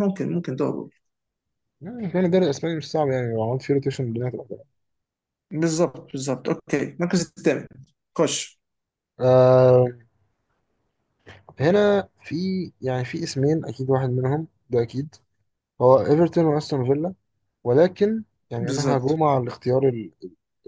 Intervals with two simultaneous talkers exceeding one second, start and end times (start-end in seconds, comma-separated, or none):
none